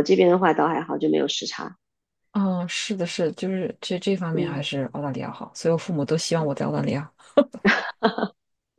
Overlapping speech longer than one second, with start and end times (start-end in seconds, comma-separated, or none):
none